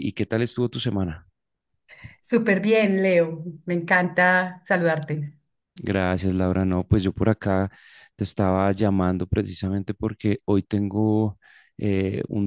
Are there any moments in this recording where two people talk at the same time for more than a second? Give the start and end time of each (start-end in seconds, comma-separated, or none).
none